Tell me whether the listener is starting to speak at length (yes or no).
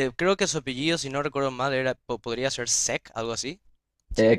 yes